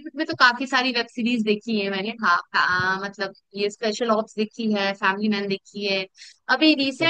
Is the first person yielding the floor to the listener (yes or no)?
no